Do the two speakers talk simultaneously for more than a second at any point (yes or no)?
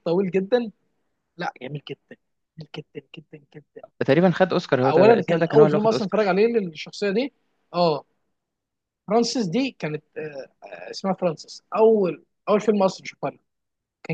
yes